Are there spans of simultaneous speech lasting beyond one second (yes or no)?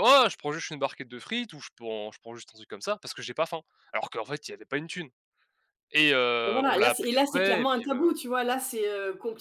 yes